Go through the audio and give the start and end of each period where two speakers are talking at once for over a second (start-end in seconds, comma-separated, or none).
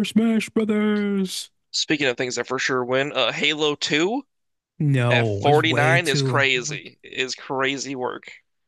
5.1-6.4